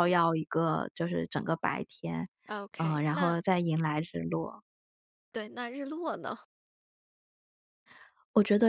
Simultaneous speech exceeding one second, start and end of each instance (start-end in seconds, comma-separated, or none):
none